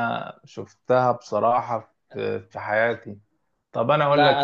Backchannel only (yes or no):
no